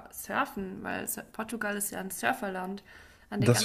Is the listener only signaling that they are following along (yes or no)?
yes